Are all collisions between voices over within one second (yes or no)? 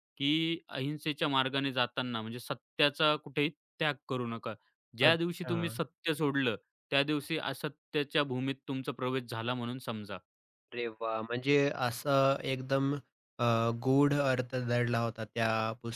yes